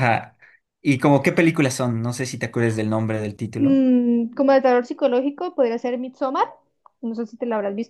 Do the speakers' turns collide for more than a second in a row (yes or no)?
no